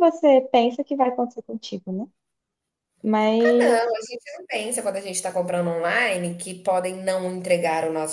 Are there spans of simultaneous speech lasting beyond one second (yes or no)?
no